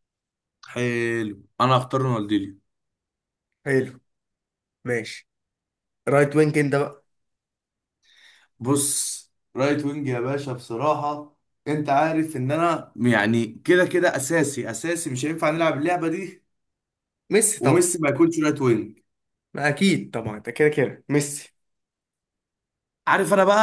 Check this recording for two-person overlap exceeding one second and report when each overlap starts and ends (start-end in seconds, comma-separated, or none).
none